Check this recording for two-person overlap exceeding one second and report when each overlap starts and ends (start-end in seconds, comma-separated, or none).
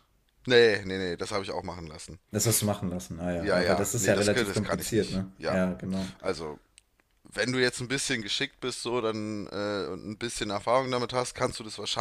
3.4-5.6